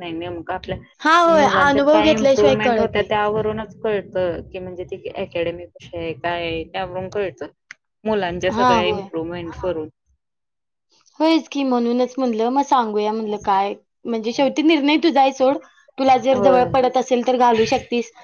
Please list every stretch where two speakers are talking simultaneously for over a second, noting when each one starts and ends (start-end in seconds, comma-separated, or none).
1.3-3.1